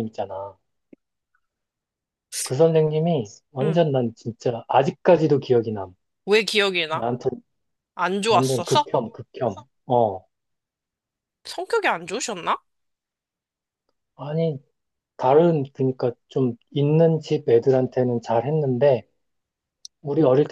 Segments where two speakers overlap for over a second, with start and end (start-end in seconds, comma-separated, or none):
none